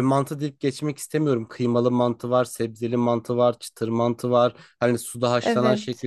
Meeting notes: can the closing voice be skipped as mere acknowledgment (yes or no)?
yes